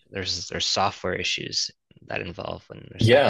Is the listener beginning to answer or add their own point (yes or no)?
yes